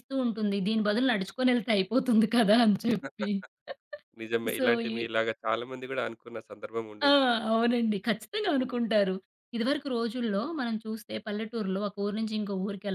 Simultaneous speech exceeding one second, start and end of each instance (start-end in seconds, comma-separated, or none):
none